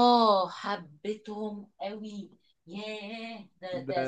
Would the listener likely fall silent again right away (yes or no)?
no